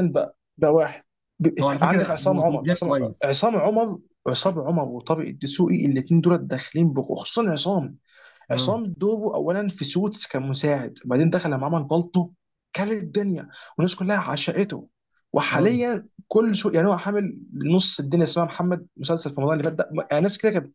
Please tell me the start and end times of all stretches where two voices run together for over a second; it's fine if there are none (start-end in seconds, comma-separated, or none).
1.6-3.4